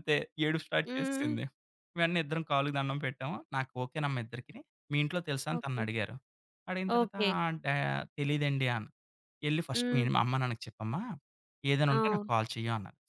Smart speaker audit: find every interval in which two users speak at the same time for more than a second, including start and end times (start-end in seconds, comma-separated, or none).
none